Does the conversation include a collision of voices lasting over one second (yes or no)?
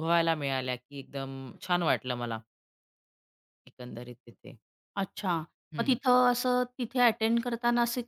no